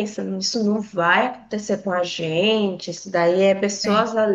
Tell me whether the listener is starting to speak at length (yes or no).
no